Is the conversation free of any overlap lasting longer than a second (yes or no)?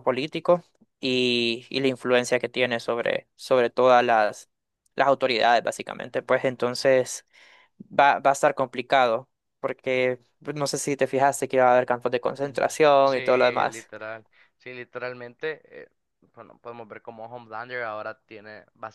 no